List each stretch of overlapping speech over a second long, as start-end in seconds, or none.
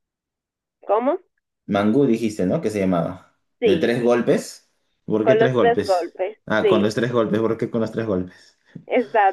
5.2-6.9